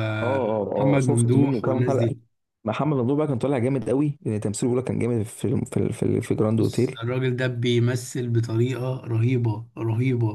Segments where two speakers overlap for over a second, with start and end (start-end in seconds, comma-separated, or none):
0.6-2.1